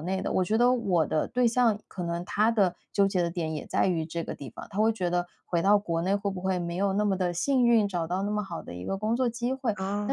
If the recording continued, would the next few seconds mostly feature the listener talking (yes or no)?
no